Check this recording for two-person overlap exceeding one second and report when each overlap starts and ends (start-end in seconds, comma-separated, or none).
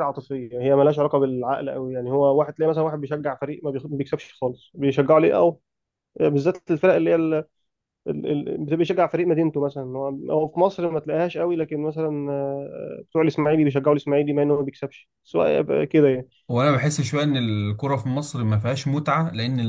none